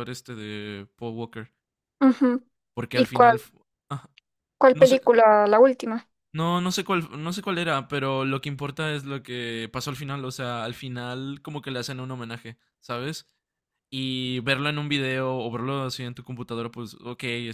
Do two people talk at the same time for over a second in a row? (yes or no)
no